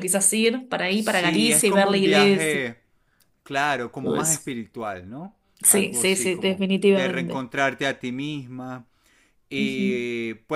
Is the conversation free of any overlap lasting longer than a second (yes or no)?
no